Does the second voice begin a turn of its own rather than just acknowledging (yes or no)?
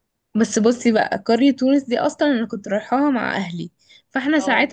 no